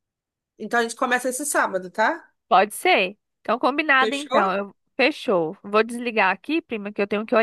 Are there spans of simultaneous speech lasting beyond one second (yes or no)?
no